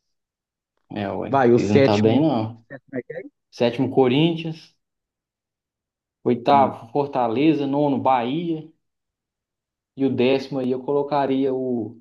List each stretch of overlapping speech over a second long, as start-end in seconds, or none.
1.3-2.6